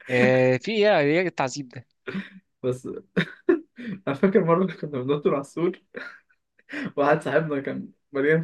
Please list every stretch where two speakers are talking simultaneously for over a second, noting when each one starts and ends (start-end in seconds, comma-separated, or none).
none